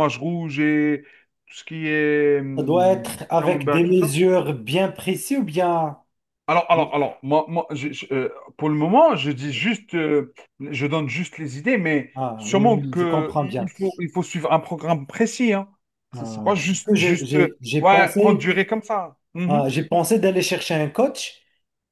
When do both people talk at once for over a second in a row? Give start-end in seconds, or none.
2.6-4.2, 12.2-13.7, 16.1-18.6